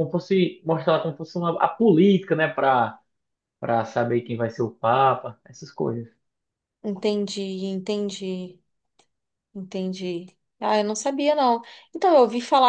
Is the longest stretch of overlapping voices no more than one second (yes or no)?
yes